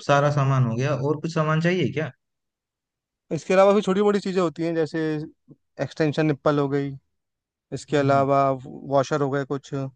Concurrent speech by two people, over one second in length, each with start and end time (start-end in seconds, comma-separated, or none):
none